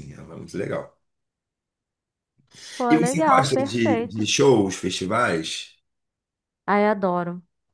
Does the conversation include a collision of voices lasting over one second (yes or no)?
yes